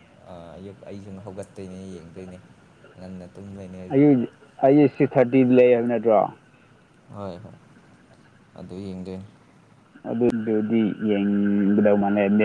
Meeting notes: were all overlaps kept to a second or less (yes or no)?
yes